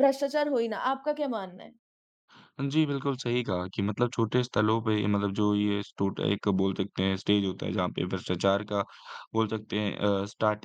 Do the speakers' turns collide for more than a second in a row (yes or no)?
no